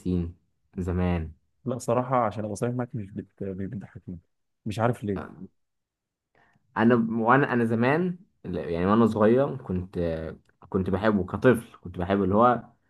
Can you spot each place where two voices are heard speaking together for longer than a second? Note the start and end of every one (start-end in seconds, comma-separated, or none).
none